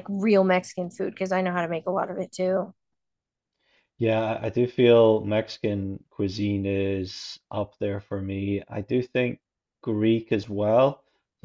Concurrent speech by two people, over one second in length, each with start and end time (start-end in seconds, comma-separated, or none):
none